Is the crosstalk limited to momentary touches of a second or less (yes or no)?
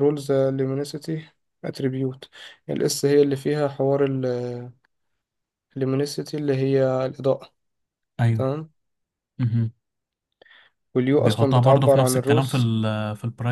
no